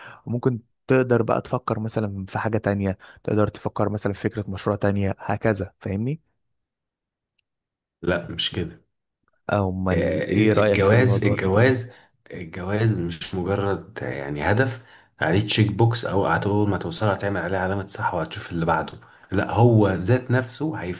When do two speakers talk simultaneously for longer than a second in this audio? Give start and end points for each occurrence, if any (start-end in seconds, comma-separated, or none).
9.9-11.7